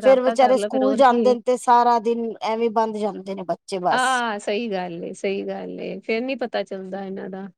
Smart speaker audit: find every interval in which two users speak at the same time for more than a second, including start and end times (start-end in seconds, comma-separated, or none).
none